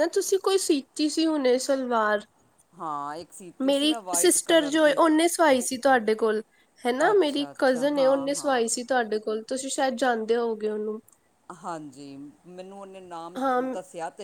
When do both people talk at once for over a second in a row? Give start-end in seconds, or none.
3.6-5.0, 7.1-8.8